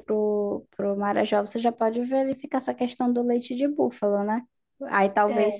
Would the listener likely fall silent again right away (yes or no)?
yes